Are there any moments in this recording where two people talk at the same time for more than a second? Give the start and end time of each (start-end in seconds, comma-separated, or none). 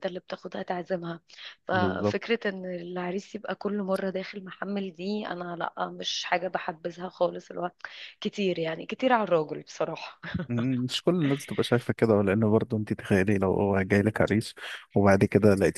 none